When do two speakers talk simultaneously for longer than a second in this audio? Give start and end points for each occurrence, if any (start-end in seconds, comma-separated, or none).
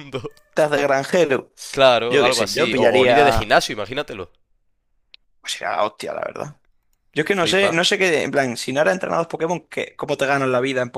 2.1-3.5